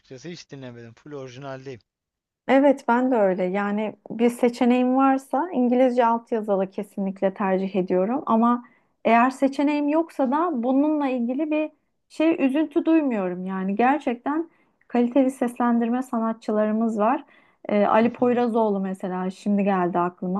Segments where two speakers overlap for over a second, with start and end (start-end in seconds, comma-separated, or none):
none